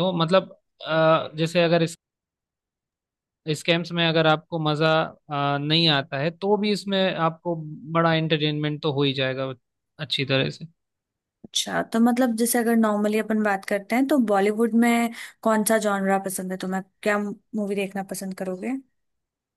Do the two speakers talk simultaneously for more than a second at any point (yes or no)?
no